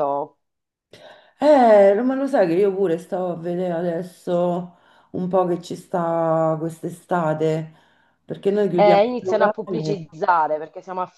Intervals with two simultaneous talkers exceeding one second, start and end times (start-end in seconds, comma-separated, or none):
8.7-10.1